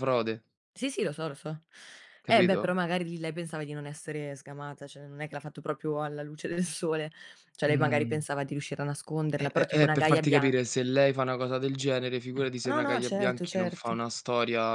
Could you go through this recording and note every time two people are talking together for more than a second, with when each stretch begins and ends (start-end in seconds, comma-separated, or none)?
9.4-10.7, 12.6-14.0